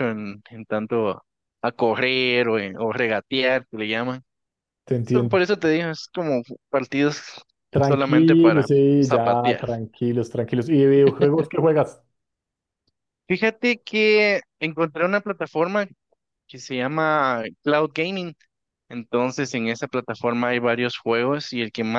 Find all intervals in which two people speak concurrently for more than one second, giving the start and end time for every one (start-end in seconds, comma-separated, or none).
7.8-9.7